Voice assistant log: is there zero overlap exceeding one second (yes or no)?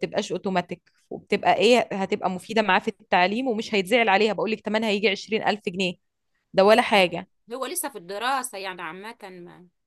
yes